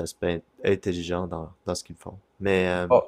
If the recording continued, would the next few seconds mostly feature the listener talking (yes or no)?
no